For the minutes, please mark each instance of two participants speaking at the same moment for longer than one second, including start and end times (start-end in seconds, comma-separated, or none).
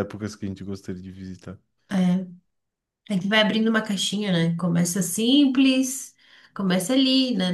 none